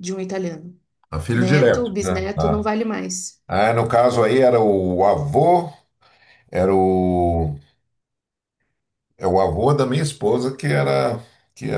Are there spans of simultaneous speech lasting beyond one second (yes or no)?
yes